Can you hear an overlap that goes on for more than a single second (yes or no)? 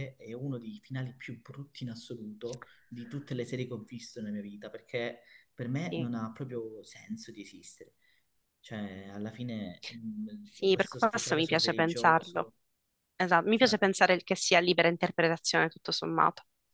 yes